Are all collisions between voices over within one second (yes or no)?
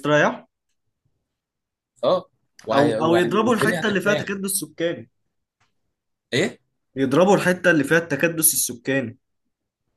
no